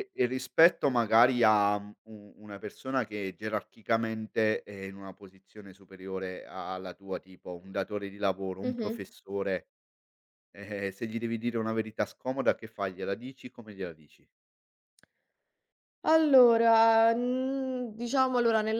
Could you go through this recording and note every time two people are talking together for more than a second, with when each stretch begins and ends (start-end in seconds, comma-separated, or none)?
none